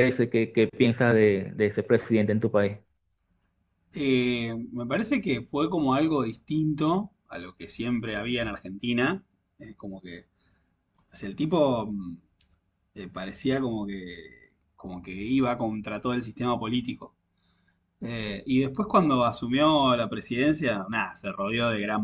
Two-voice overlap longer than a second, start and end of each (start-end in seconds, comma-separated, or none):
none